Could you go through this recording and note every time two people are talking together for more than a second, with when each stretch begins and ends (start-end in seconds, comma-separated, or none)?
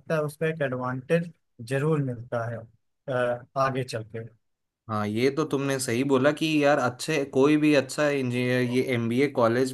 none